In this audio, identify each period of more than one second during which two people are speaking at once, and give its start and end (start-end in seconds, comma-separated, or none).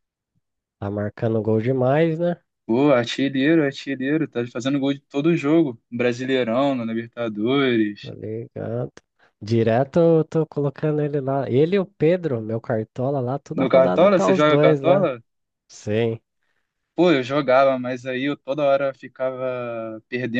13.5-15.1